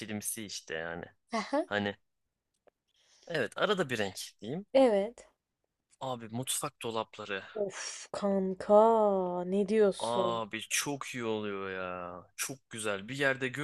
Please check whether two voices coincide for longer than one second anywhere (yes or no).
no